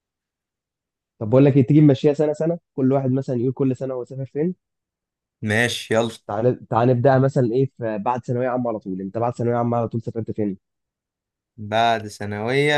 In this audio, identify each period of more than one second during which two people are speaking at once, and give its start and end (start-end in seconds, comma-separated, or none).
none